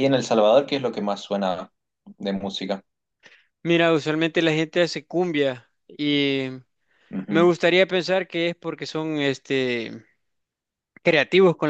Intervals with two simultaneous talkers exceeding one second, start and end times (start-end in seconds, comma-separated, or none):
none